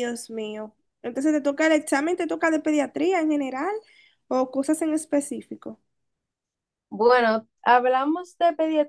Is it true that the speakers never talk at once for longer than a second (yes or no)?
yes